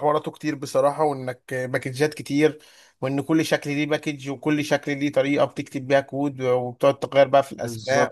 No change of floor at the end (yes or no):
yes